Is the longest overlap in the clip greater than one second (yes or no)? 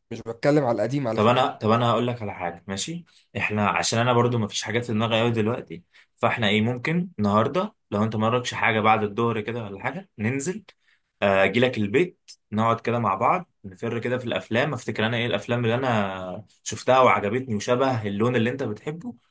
no